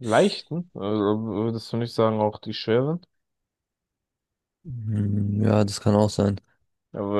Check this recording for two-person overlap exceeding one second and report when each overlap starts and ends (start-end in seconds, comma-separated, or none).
none